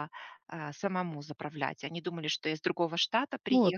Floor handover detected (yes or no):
no